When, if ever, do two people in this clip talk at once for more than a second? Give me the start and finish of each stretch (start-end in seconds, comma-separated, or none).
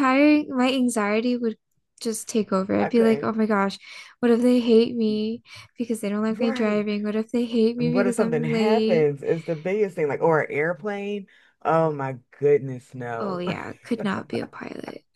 7.8-9.1